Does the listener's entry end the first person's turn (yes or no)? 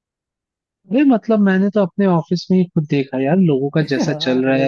no